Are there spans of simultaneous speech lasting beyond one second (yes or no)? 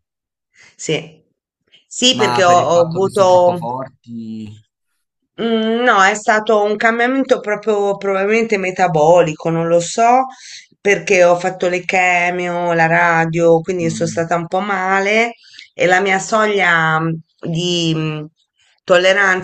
yes